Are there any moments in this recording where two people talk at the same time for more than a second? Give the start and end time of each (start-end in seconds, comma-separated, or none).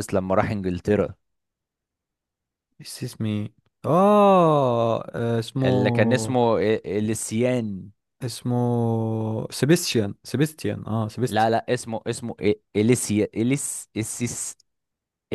none